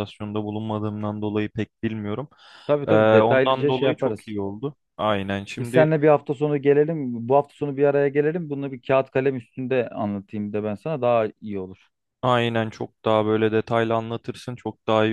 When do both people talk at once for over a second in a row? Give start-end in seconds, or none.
2.9-4.3